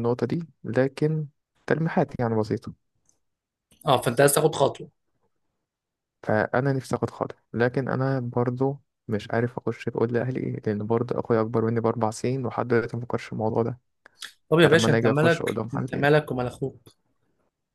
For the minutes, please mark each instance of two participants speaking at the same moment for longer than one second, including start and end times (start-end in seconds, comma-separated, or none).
14.6-16.1